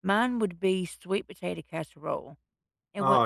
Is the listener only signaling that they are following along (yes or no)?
yes